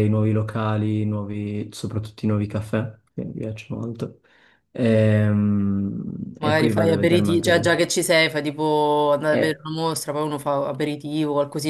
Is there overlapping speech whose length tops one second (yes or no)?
yes